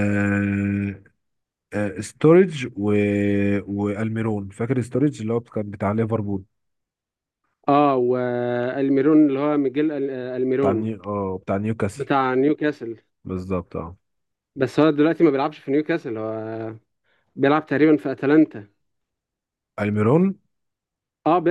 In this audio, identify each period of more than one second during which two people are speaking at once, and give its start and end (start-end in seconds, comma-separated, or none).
none